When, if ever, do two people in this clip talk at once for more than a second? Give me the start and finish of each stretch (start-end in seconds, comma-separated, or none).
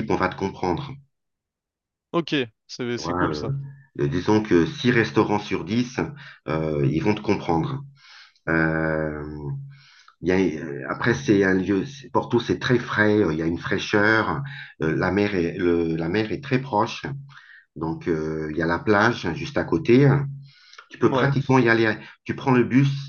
none